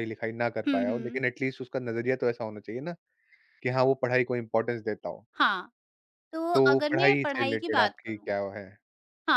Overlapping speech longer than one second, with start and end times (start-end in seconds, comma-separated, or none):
6.5-8.3